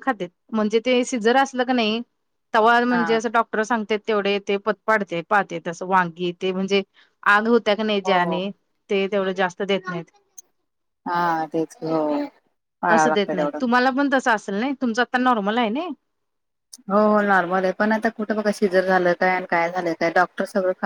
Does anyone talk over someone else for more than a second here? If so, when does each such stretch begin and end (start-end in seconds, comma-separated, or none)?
none